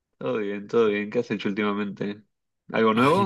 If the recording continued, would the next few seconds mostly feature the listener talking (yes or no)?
yes